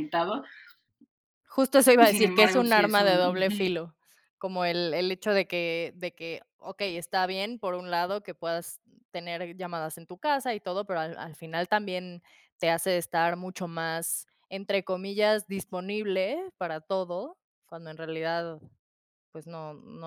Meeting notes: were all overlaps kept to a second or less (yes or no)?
no